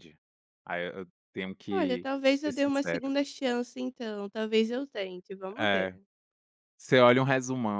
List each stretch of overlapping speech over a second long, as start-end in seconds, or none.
1.7-3.1